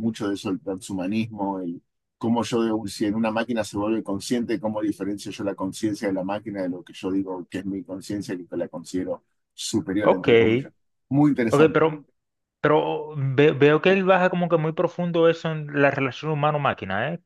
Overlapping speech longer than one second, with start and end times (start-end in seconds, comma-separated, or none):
none